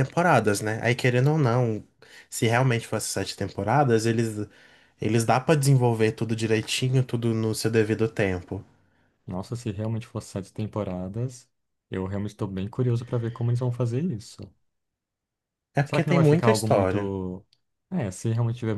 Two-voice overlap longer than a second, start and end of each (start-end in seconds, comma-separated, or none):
15.8-17.1